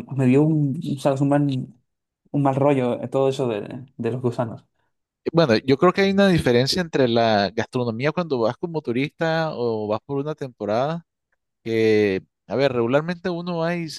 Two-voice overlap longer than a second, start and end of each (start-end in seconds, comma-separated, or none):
none